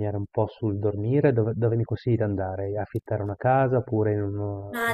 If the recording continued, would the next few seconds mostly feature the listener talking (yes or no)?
yes